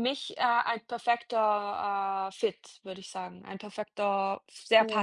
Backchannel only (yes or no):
no